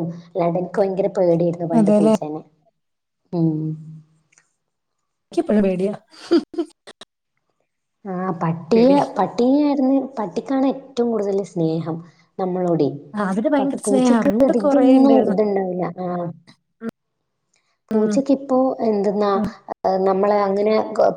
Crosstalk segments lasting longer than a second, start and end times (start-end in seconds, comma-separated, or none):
13.6-15.4